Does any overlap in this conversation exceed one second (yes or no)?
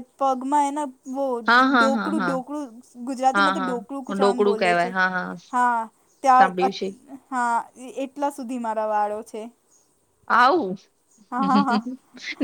yes